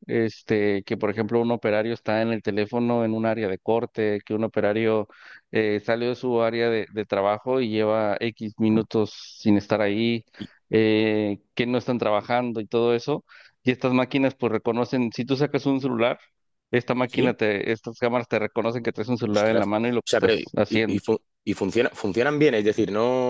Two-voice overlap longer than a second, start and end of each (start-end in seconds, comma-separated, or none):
19.2-21.0